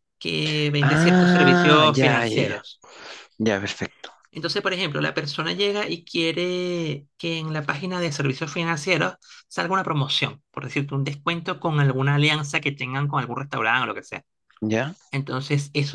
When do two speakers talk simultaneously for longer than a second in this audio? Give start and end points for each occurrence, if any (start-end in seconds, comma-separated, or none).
0.8-2.6